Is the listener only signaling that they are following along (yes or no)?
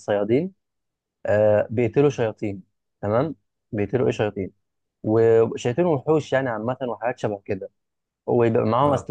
yes